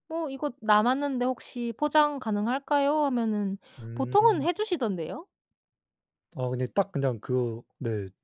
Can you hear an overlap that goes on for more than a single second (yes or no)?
no